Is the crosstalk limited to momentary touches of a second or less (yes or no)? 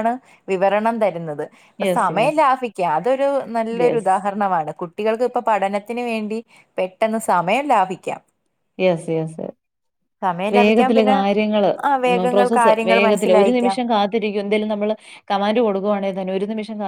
no